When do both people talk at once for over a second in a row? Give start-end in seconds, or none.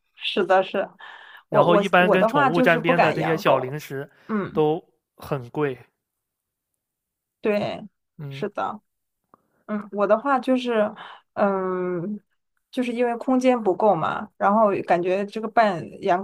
1.5-3.8